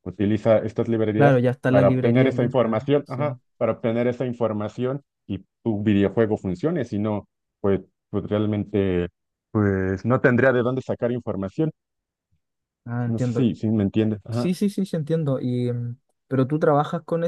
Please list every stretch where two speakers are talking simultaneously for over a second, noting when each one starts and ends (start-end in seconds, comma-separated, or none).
1.1-3.4